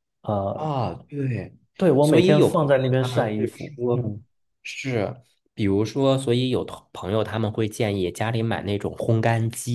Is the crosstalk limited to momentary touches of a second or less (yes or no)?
no